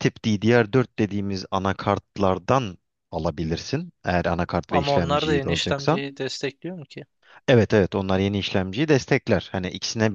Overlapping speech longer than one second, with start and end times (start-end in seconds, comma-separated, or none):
4.7-6.0